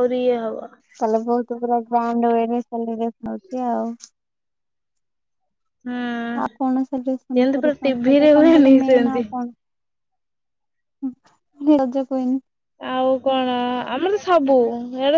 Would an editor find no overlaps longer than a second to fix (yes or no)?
no